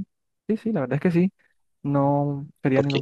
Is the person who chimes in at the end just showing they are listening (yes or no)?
no